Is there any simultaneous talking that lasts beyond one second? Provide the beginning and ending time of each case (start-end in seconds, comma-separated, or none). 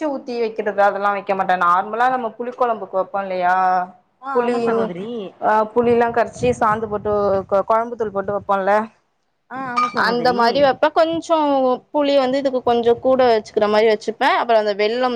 none